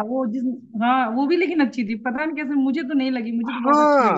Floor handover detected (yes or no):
yes